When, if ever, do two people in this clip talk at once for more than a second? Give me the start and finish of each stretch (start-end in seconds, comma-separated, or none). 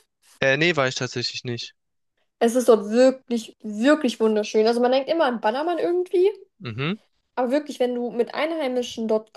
none